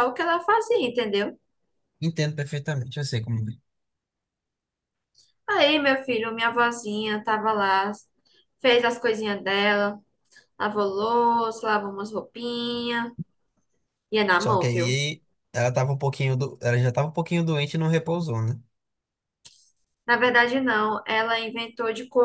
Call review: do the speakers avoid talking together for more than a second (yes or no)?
yes